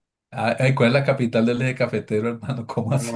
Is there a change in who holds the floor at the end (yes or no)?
yes